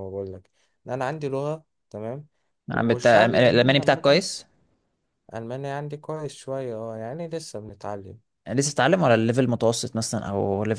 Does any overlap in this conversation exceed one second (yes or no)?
yes